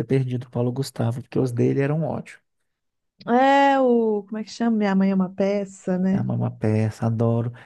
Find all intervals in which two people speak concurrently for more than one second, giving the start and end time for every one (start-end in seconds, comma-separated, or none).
none